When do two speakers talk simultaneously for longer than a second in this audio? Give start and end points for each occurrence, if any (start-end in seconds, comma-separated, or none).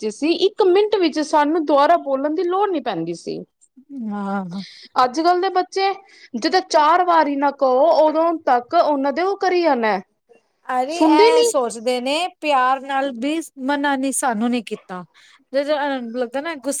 none